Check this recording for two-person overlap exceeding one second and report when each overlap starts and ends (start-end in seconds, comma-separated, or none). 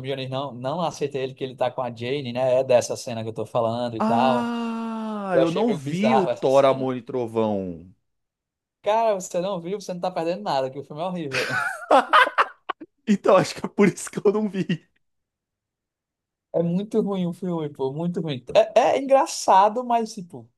5.3-6.9